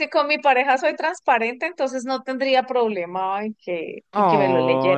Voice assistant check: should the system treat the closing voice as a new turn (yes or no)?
yes